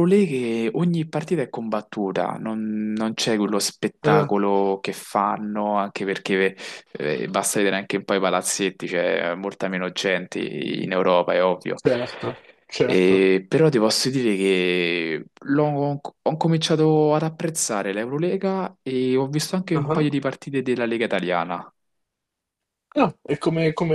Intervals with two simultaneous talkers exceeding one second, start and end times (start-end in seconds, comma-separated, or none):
none